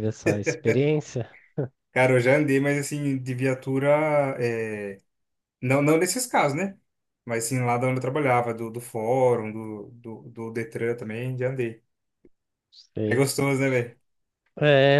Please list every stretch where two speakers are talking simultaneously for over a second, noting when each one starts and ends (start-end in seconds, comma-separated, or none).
none